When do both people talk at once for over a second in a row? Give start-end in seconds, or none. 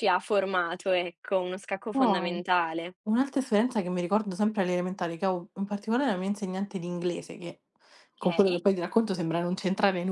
none